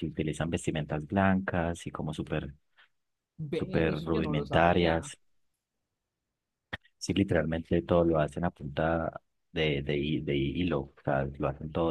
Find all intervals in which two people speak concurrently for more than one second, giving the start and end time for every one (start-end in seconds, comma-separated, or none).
3.5-5.1